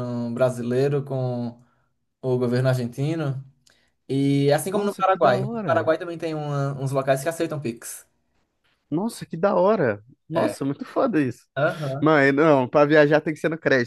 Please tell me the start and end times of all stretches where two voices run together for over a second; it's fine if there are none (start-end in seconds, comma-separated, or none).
4.7-5.9